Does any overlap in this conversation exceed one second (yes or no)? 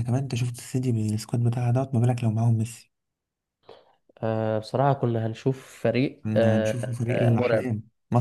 yes